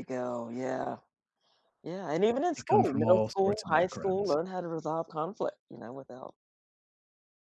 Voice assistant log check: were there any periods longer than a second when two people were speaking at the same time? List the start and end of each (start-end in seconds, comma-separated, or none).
2.6-4.4